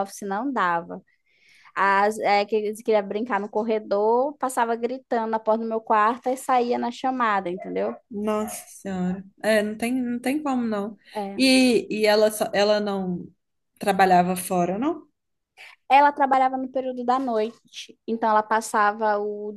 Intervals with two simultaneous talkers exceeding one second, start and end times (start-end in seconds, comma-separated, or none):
none